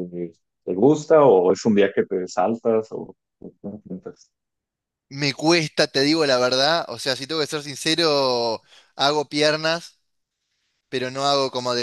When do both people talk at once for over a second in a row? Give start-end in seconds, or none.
none